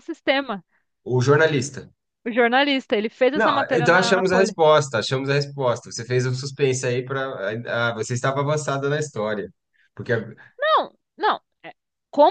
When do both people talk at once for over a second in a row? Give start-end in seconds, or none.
3.3-4.5